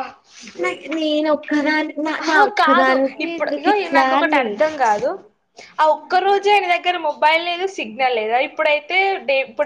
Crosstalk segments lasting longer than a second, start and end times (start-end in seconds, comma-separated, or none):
2.3-4.5